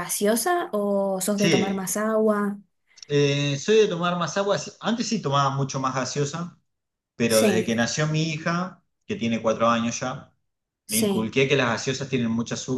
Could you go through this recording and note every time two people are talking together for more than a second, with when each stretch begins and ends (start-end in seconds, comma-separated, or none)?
none